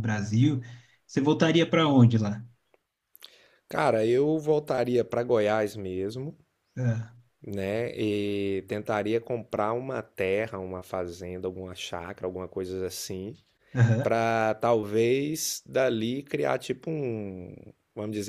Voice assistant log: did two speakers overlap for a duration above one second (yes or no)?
no